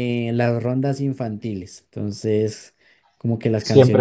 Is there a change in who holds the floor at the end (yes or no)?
yes